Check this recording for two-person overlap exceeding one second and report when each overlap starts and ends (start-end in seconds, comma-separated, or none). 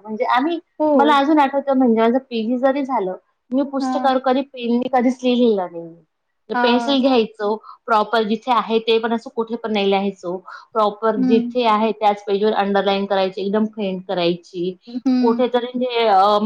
none